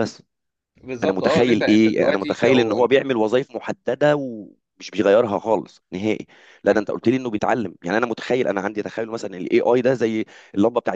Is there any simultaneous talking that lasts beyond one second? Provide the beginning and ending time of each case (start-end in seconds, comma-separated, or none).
1.0-2.8